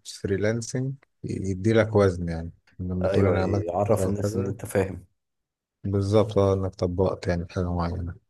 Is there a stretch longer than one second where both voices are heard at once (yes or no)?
yes